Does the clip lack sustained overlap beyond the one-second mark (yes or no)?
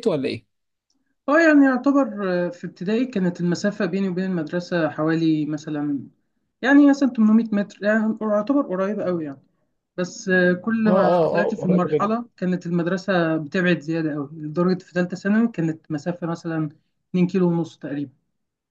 no